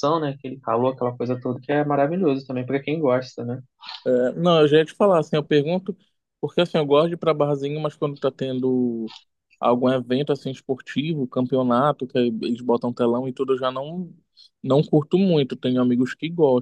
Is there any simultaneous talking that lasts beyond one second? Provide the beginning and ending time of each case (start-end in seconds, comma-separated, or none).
none